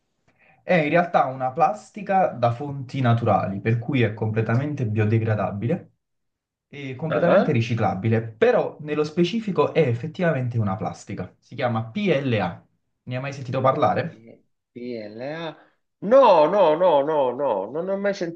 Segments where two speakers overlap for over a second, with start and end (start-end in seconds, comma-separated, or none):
none